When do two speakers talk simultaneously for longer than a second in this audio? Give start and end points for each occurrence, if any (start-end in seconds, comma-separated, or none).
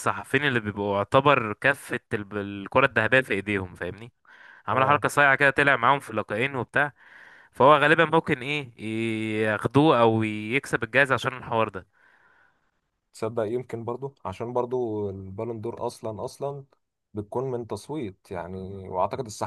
none